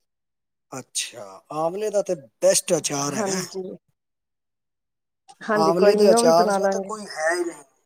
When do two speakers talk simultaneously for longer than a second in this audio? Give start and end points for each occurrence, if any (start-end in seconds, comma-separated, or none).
5.6-6.9